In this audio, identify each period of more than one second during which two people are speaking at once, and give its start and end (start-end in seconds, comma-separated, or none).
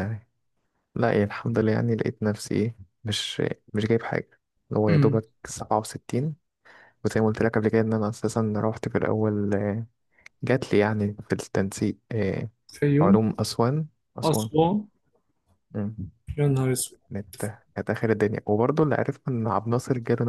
none